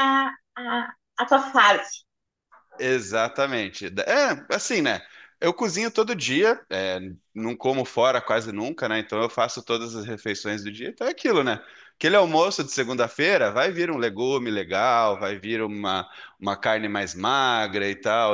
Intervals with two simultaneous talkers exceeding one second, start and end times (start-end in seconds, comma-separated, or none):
none